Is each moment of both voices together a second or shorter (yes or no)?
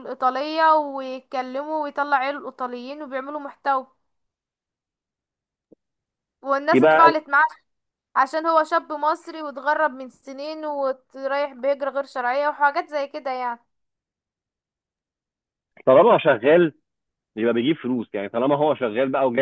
yes